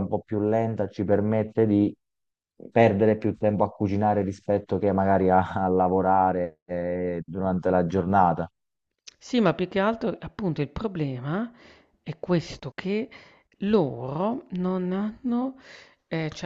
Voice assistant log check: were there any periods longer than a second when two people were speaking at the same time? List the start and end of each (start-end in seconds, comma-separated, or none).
none